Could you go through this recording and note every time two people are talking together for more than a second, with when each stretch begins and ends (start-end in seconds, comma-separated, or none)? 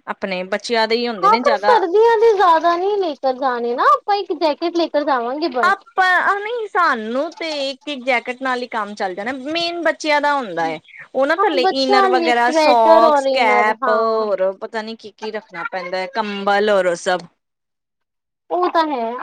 11.4-13.9